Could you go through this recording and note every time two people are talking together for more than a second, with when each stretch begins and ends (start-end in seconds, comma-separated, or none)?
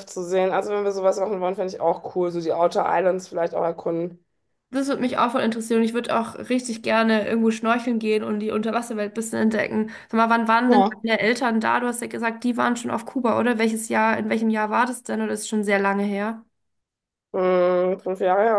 none